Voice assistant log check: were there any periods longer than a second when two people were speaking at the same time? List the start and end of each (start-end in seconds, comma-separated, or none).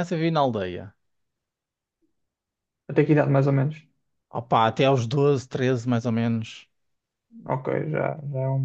none